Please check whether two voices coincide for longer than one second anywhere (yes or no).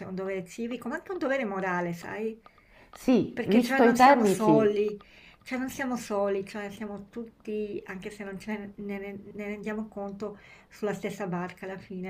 yes